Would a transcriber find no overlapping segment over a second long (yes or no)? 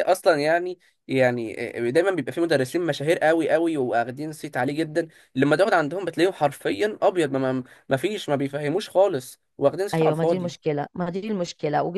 yes